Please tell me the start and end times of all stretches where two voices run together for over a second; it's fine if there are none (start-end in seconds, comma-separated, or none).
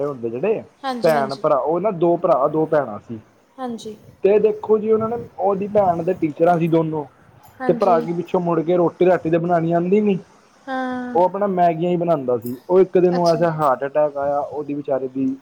none